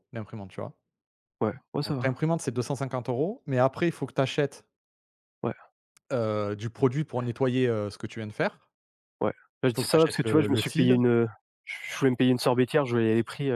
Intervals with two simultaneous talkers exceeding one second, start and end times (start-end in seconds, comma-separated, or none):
9.5-11.0